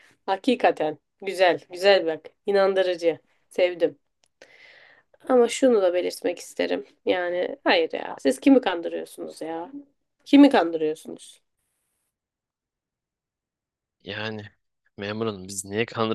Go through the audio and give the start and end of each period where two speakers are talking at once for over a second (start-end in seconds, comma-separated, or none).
none